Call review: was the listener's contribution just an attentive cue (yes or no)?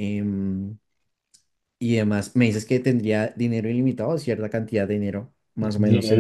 no